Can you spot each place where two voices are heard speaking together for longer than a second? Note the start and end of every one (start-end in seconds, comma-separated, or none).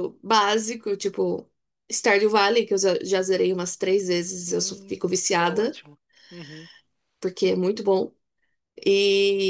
4.5-5.8